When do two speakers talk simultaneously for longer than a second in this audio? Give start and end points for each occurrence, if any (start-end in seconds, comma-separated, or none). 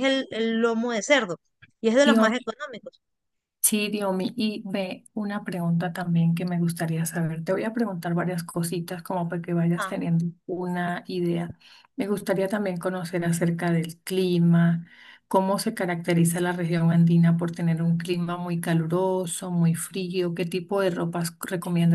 none